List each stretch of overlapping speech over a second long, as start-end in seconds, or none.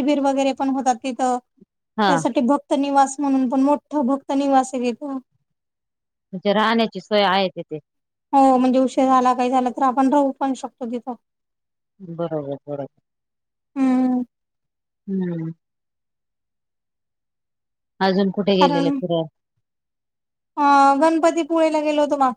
none